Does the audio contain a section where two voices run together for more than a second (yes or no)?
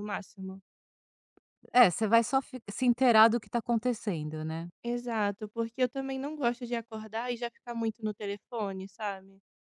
no